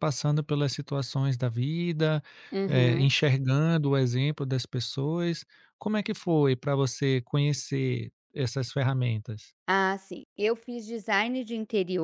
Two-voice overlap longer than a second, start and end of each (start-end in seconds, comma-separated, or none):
none